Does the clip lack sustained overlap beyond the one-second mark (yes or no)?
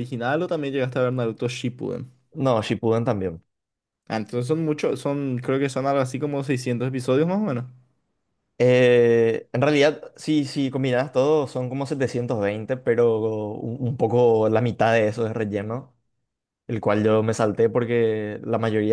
yes